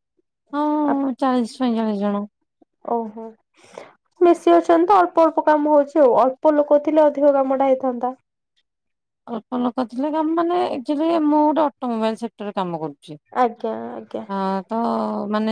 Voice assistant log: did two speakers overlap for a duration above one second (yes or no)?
no